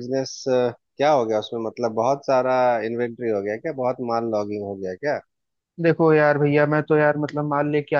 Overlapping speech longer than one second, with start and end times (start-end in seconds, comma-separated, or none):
none